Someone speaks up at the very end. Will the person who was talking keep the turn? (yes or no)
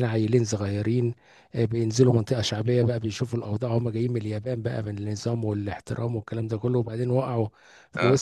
yes